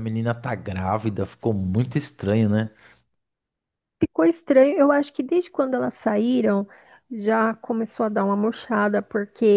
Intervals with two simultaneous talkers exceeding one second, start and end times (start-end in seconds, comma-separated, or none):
none